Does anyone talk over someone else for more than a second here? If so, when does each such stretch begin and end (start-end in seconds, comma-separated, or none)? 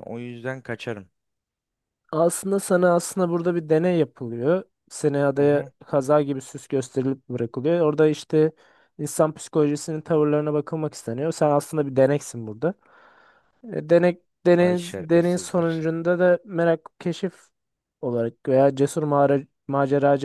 14.6-15.9